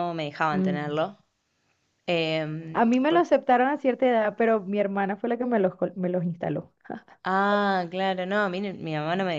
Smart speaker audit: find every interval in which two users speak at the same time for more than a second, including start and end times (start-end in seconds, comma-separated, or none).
none